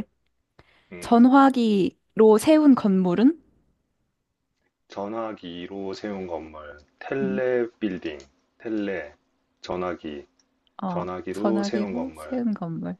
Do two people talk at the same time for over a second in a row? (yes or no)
yes